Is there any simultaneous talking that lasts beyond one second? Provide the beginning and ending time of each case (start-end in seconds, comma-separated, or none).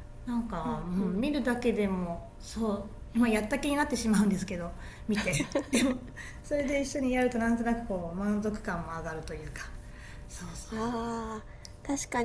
none